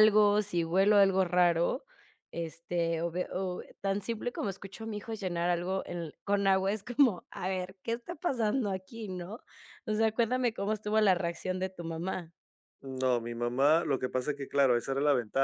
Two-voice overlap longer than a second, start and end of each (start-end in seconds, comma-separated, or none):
none